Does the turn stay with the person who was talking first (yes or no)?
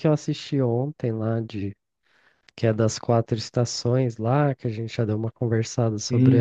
no